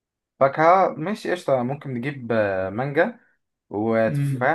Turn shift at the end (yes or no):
no